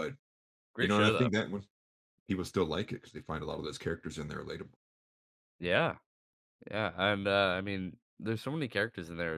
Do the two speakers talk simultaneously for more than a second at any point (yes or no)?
no